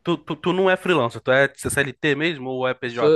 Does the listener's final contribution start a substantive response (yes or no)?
yes